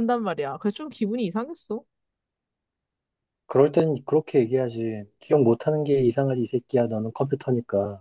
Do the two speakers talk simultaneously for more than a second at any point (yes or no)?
no